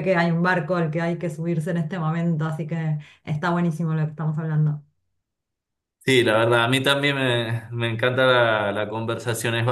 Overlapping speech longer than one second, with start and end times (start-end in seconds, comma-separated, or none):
none